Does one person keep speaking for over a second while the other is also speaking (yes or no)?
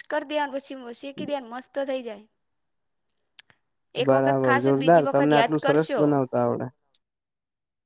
yes